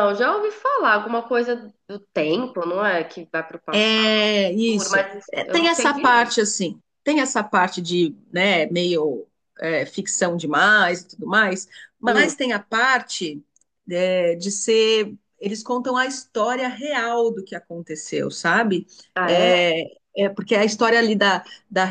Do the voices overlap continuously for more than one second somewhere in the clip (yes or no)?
yes